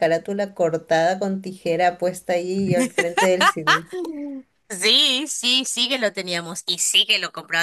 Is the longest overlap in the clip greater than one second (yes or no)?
no